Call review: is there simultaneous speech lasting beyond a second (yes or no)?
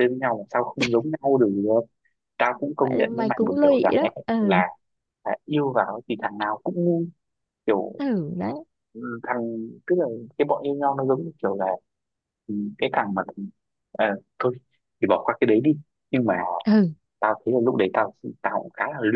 yes